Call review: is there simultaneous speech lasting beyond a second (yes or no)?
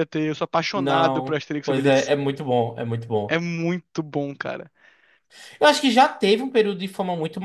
yes